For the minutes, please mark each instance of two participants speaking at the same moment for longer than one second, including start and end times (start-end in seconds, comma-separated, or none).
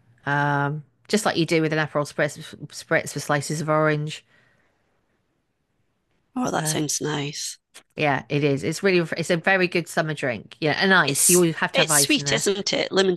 11.1-12.4